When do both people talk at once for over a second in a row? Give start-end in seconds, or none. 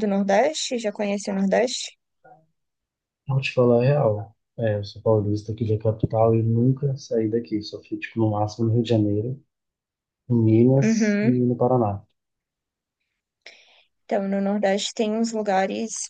none